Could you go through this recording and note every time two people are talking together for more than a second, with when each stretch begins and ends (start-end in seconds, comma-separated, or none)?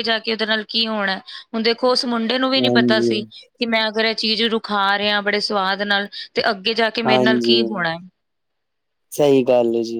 none